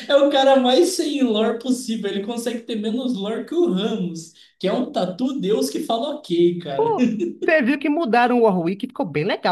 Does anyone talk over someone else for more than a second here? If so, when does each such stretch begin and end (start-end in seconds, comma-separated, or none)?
none